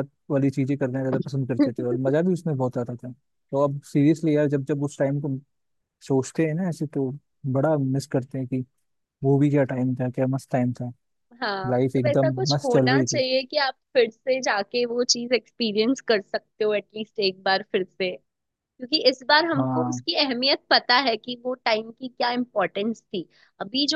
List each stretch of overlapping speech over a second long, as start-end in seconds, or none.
11.7-13.2